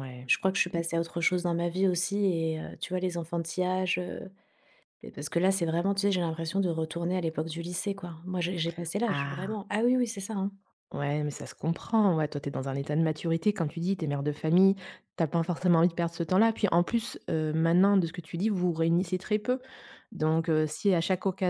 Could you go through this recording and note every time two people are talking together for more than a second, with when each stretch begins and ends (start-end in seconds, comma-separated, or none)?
none